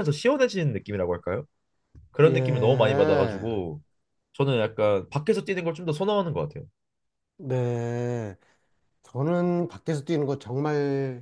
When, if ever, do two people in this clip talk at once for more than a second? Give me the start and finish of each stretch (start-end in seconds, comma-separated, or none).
2.2-3.5